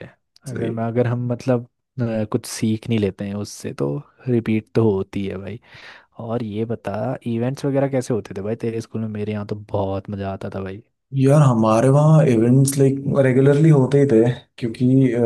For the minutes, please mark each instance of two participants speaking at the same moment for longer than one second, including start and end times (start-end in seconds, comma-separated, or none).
none